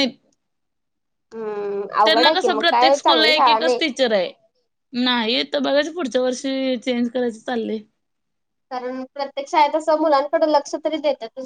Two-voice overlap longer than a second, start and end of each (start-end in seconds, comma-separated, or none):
2.0-3.8